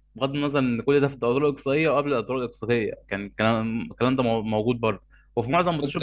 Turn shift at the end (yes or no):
no